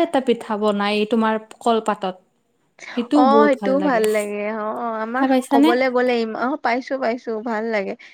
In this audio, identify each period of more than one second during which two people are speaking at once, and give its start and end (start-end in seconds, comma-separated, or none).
none